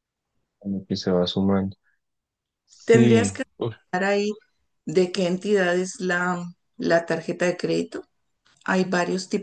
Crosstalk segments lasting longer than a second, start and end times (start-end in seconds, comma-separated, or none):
none